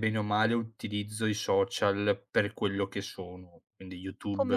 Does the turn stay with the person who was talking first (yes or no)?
no